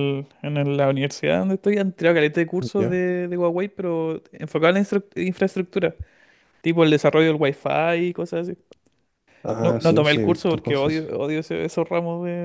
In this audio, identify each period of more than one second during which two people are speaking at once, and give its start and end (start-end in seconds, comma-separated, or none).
9.6-11.1